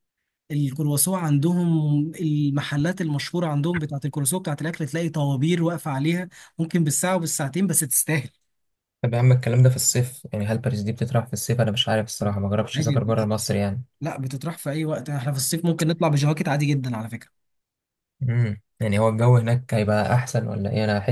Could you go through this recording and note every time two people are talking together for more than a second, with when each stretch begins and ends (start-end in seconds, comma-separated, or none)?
none